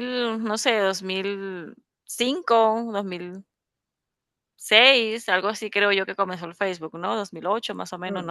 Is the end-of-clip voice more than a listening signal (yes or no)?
yes